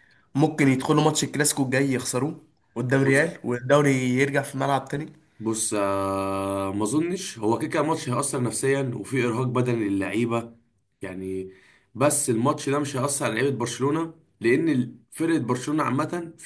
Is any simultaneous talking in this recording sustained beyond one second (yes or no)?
no